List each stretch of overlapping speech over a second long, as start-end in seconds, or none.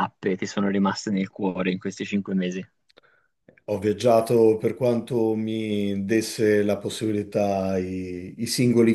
none